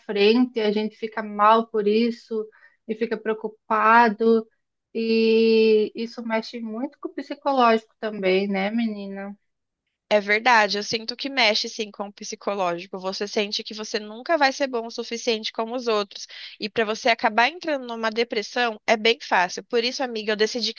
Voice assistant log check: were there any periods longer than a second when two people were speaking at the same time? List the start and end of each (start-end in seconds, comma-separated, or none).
none